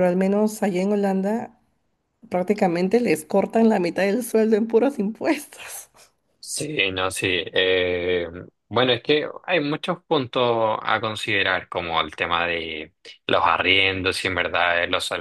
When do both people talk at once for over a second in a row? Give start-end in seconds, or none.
none